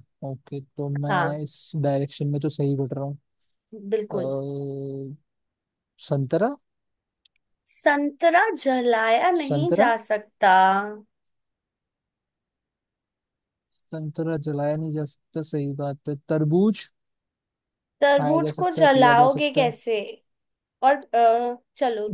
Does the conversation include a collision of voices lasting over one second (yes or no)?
yes